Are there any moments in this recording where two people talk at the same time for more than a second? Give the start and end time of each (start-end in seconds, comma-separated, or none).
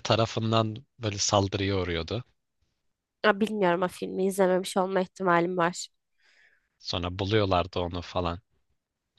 none